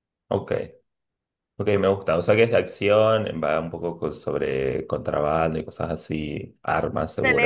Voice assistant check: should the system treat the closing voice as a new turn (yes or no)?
yes